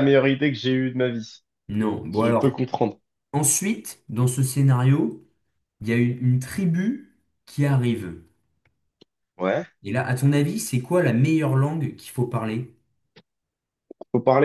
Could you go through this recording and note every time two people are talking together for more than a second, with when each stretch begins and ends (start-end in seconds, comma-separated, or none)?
none